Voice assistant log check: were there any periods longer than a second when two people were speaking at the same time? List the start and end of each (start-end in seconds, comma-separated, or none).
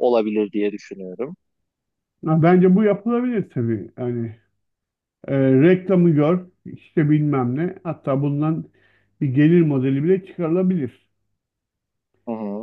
none